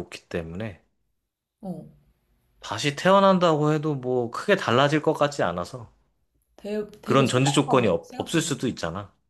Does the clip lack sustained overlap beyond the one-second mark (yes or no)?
no